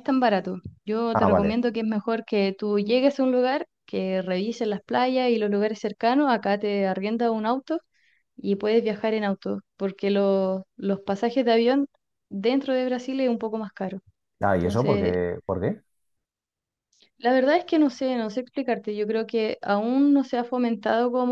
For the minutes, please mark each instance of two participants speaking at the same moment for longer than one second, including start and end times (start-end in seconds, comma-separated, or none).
none